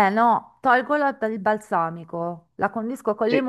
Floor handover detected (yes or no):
no